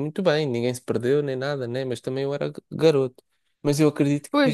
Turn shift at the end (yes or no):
no